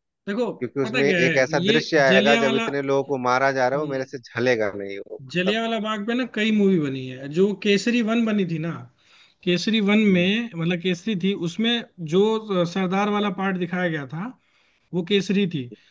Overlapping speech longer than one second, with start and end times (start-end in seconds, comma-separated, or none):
0.6-2.7